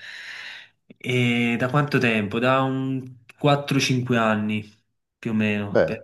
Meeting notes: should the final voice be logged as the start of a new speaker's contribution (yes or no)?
no